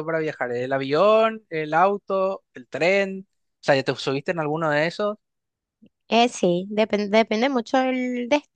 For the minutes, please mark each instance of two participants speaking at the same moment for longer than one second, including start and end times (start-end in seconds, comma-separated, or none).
none